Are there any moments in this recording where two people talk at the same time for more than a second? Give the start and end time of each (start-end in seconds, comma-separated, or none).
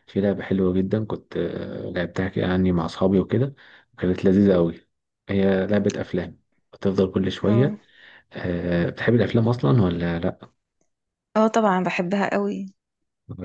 none